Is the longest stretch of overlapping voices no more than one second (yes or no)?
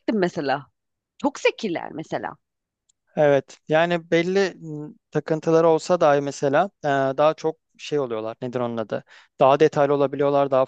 yes